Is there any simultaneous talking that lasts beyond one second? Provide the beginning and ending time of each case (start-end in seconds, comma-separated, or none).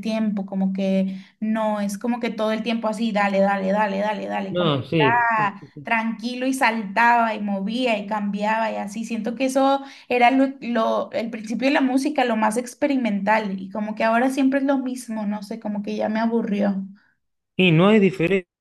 4.5-5.9